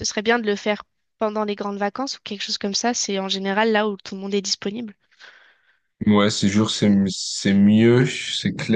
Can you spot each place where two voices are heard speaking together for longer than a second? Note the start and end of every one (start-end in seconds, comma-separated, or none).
none